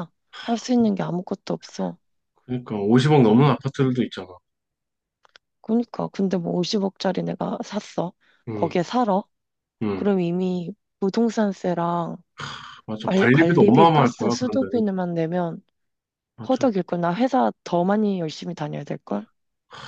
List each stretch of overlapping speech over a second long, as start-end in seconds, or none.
13.0-14.8